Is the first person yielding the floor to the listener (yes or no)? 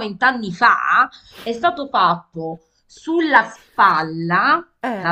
no